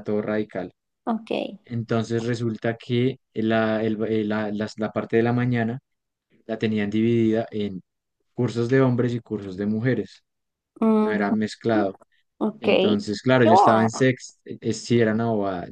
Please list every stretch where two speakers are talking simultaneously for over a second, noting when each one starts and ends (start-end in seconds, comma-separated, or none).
12.6-14.1